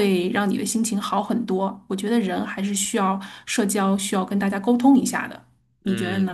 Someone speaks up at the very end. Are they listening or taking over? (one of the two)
taking over